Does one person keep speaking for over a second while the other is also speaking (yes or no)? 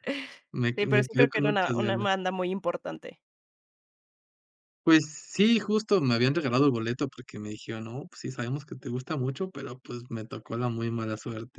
yes